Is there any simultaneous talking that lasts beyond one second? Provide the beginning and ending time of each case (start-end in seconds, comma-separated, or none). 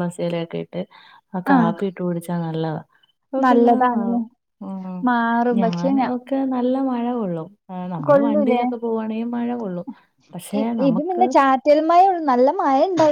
none